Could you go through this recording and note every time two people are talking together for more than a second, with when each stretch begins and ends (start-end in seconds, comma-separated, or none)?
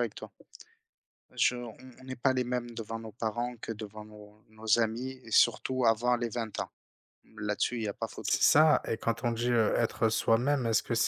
none